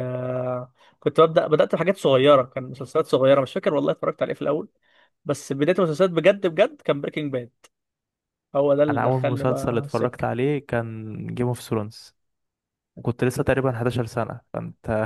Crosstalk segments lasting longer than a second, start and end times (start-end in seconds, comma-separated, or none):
8.9-10.2